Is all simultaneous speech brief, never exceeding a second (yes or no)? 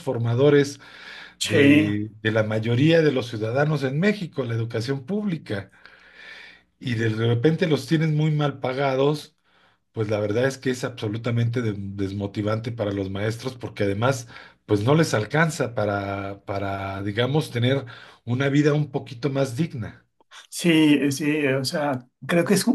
yes